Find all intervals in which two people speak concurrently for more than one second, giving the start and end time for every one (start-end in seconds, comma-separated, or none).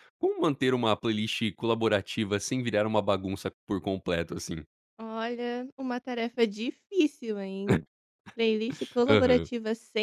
none